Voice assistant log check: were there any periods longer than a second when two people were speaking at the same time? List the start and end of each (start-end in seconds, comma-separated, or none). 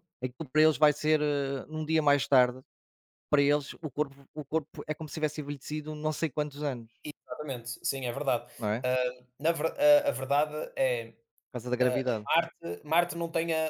none